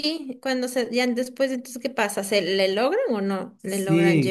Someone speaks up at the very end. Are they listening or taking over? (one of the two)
taking over